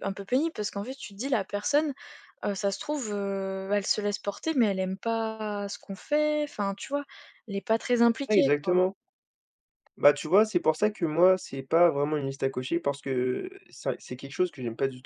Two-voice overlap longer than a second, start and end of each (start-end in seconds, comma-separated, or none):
none